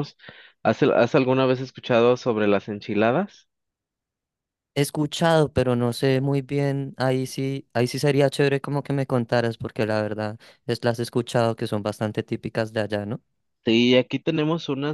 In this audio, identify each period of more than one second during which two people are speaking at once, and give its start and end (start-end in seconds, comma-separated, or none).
none